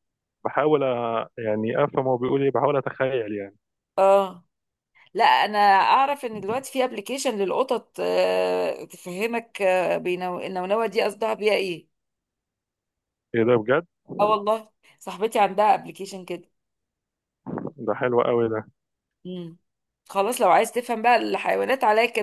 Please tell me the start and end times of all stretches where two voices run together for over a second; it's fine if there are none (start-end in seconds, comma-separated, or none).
none